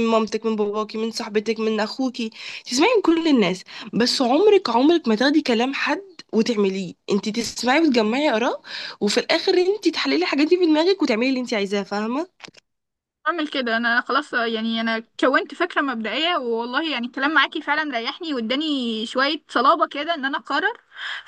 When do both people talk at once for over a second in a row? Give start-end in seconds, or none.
none